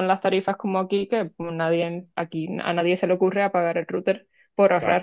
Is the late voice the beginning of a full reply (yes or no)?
no